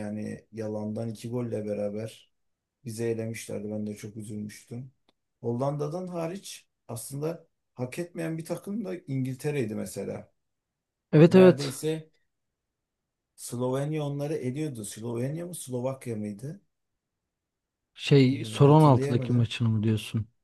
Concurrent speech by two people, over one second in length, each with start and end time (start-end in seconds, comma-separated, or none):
18.3-19.5